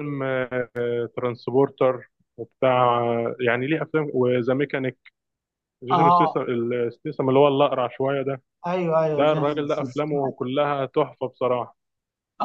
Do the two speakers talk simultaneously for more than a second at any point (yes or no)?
yes